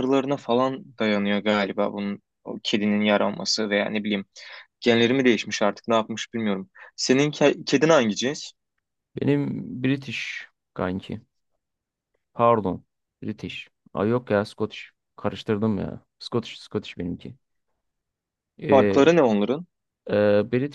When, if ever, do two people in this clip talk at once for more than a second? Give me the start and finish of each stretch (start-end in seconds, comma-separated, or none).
none